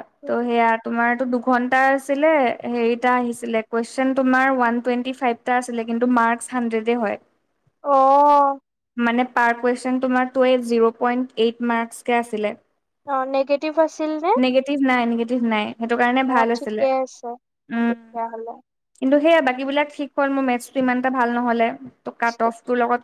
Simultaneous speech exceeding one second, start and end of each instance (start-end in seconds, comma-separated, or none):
none